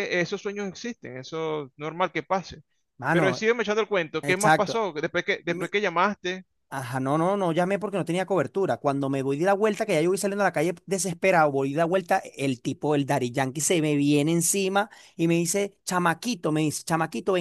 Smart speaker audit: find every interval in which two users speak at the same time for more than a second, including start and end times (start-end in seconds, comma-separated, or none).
none